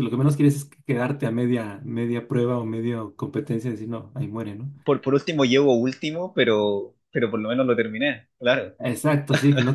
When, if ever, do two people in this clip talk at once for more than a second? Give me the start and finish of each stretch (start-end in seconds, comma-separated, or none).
none